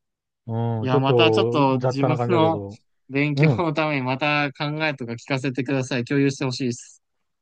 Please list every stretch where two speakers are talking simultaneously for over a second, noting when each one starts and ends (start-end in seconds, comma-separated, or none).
0.8-2.6